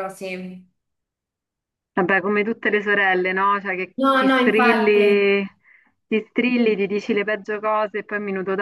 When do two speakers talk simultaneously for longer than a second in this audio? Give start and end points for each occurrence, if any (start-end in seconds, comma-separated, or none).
4.0-5.3